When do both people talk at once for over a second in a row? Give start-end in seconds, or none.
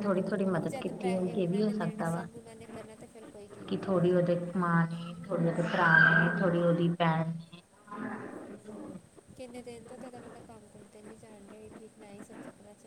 0.7-2.3